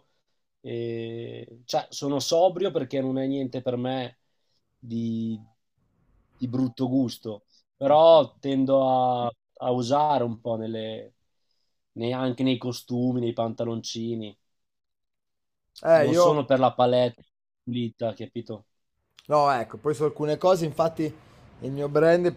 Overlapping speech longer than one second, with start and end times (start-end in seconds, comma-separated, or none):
none